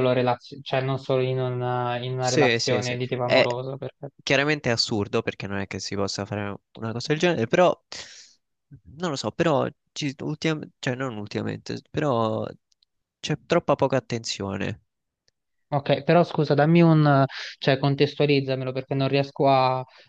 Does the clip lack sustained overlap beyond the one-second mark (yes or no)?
no